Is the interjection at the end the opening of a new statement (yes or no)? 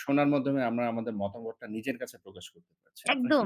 yes